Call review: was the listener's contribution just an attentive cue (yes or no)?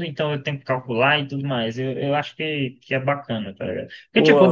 yes